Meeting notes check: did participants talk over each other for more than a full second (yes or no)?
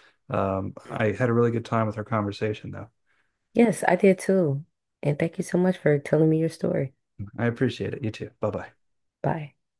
no